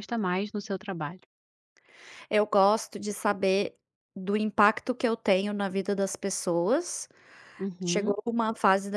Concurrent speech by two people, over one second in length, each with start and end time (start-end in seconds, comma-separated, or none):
none